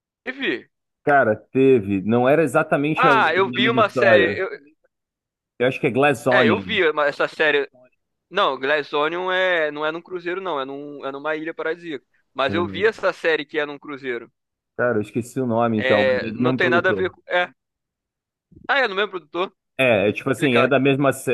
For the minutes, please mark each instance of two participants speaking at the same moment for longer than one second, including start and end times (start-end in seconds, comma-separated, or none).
2.9-4.4, 15.8-17.2